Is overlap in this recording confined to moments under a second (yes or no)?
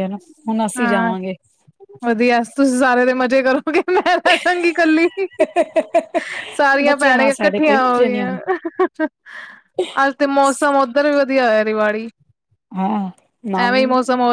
no